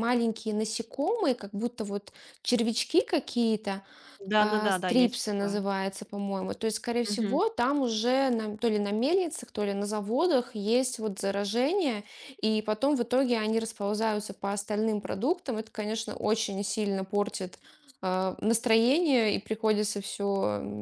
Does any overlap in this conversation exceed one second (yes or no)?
yes